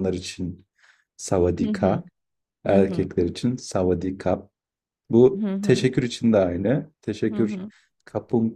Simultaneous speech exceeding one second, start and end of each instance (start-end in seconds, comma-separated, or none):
none